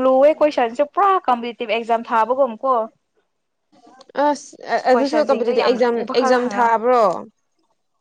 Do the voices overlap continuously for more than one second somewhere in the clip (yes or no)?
yes